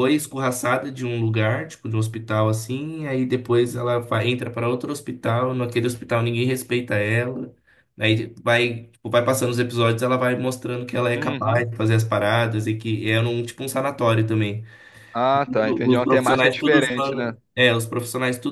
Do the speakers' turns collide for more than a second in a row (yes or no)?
yes